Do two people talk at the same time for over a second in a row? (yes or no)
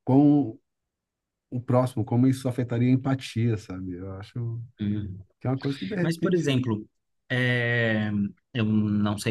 no